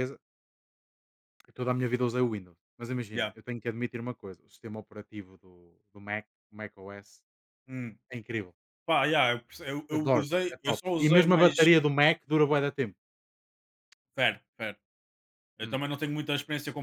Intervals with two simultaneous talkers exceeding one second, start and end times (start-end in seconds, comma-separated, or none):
10.0-11.7